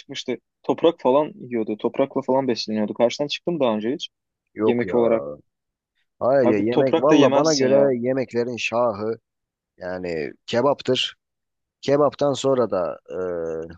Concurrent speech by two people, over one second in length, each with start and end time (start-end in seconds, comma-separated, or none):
6.4-7.9